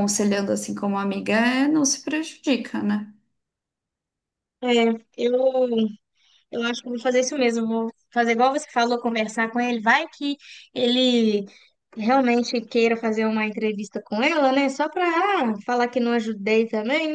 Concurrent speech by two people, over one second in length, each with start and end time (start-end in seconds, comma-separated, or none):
none